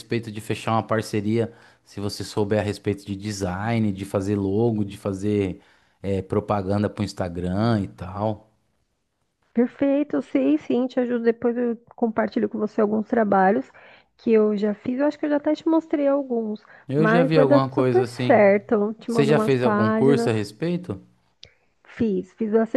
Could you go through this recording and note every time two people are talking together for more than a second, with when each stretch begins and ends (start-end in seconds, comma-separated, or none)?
16.9-18.4, 19.1-20.3